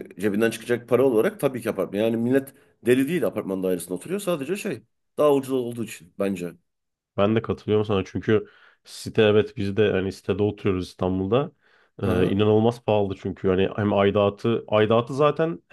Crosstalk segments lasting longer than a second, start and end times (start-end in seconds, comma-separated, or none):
none